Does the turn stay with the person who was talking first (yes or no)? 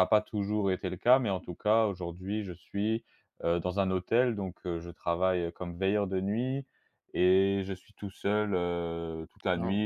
yes